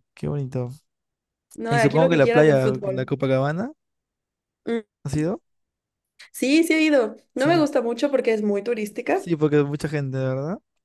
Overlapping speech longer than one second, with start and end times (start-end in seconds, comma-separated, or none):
1.7-3.1